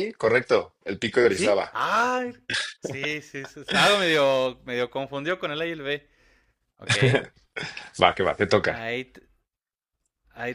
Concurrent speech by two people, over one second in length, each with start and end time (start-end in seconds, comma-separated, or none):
none